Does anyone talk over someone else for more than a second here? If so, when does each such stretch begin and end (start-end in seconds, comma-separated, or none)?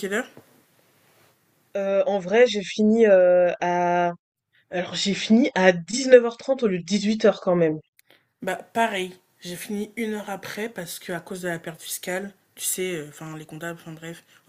none